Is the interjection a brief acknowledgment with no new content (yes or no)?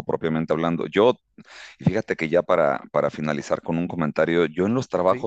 yes